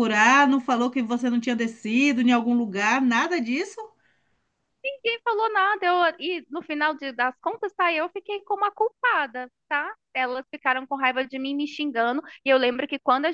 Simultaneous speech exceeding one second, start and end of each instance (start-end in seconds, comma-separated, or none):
none